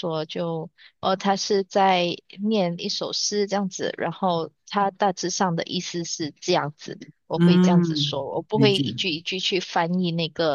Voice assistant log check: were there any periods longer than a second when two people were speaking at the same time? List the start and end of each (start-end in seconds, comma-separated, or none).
7.3-8.8